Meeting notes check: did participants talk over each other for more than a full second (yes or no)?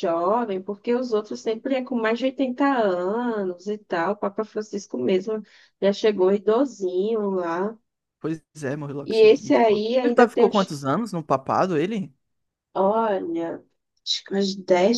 yes